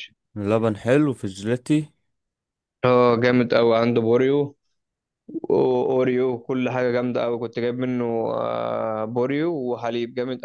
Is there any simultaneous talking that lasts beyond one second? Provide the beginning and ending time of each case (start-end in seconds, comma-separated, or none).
none